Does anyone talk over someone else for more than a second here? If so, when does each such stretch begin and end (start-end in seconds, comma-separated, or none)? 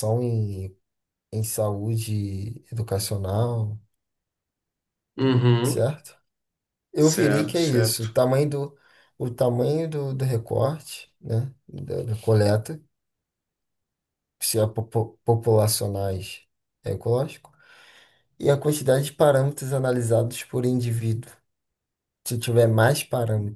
7.0-8.2